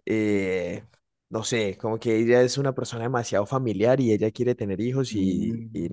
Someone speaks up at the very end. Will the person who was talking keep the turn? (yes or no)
yes